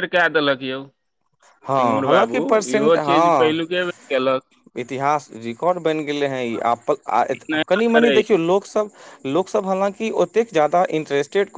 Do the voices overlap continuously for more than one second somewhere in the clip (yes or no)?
yes